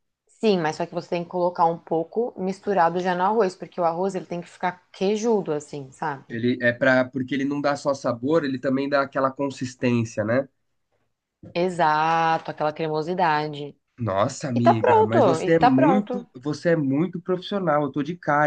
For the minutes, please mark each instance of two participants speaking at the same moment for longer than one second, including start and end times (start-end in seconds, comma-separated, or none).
14.5-16.2